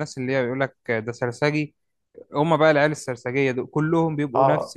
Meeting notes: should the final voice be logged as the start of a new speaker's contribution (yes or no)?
no